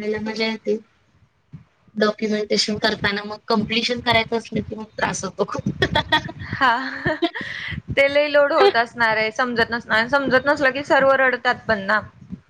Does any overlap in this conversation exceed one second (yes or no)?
no